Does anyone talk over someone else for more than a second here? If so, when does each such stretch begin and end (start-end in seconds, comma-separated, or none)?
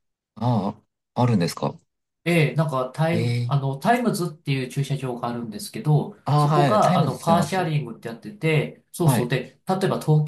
6.2-7.7